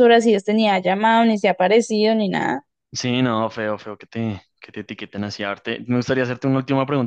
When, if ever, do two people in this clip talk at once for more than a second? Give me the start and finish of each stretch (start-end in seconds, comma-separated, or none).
none